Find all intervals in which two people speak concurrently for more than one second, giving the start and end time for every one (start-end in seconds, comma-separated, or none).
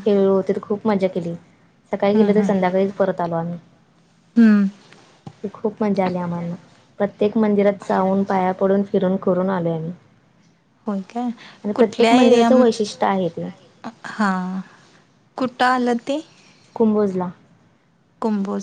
none